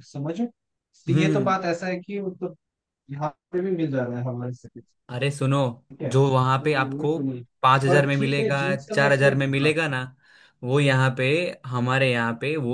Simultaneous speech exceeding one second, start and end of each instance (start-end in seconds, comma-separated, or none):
7.9-9.7